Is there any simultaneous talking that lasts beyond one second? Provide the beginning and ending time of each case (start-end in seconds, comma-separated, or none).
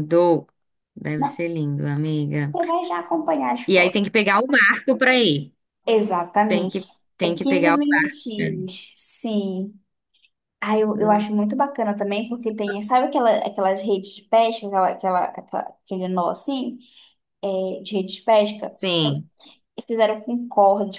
6.5-8.2